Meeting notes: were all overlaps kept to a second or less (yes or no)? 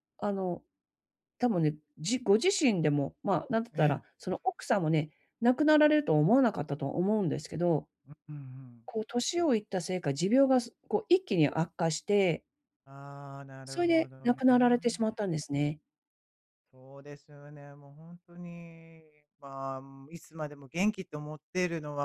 no